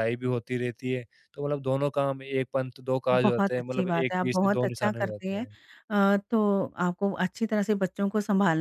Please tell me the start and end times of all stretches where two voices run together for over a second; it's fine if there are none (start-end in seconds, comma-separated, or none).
3.1-5.5